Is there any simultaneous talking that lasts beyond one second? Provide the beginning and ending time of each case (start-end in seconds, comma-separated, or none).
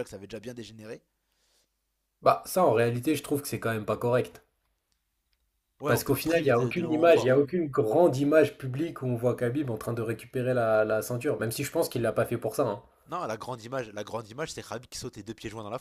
5.9-7.4